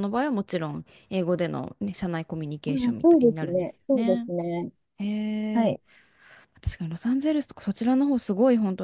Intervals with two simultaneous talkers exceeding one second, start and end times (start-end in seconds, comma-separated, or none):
2.7-4.3